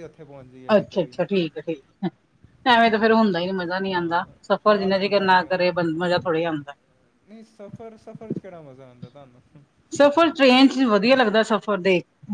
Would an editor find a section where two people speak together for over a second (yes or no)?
yes